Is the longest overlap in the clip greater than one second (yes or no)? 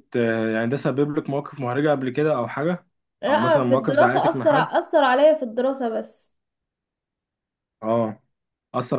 yes